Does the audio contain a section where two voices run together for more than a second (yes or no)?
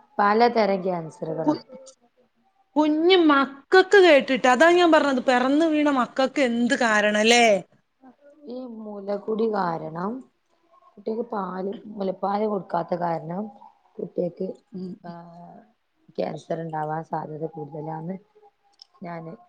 no